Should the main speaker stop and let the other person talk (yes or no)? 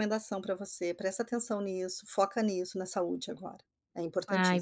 yes